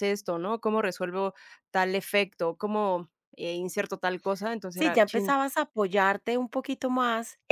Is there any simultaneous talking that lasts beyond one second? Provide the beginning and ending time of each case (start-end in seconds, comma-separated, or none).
none